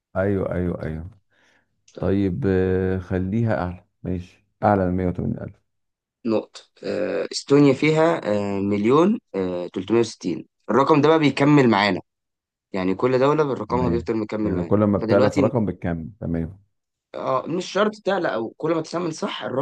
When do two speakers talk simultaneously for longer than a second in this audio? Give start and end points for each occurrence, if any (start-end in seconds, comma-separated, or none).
13.7-15.5